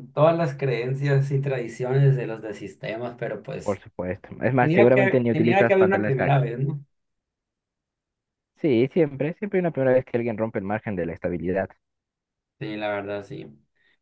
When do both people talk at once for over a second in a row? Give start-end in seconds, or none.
4.6-6.4